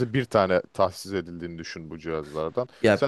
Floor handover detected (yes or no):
no